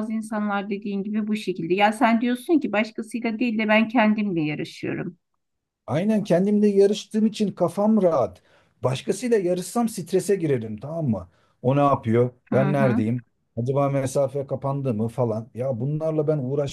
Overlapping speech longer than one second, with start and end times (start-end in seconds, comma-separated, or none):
none